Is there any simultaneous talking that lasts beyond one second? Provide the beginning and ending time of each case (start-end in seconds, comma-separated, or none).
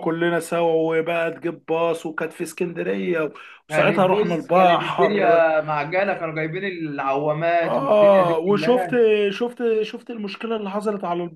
3.7-5.5, 7.6-8.9